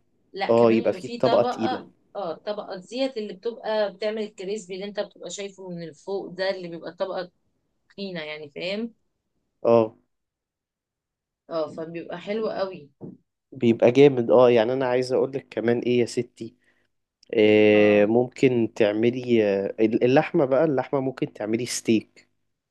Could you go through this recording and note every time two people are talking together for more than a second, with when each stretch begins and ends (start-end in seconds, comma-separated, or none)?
0.5-1.8